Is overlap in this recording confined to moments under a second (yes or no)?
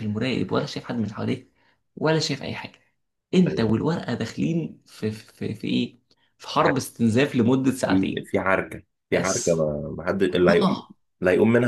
yes